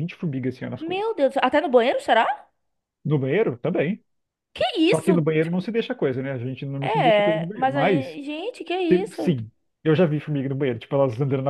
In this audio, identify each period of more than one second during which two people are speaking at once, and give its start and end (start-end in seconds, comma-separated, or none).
6.8-8.2